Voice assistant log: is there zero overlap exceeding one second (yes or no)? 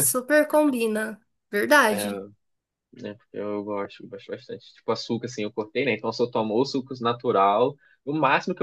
yes